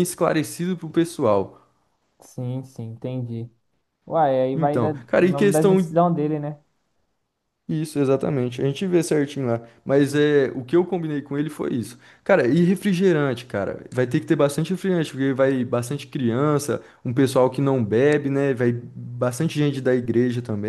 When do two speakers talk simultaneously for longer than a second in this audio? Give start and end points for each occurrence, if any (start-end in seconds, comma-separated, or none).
4.5-5.9